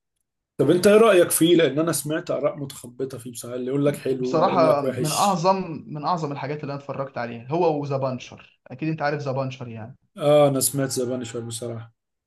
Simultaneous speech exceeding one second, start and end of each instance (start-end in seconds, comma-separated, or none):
4.2-5.4